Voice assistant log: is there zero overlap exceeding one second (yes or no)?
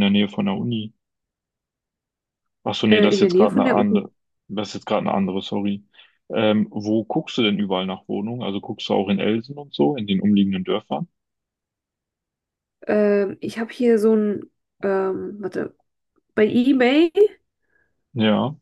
no